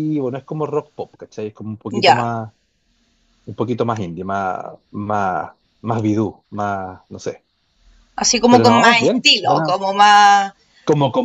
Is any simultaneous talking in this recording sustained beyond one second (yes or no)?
yes